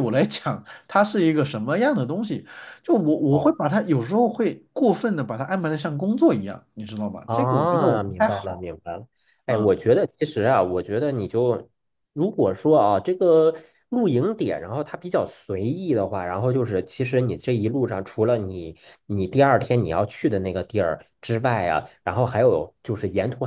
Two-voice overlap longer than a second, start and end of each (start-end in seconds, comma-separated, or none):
7.2-8.7